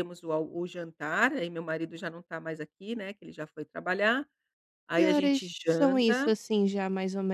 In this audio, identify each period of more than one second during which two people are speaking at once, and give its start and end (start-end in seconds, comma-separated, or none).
5.0-6.3